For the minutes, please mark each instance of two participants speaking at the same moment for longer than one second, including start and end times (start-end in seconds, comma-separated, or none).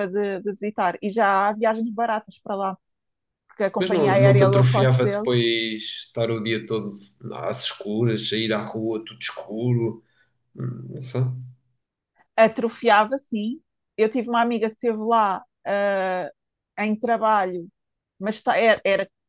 3.8-5.3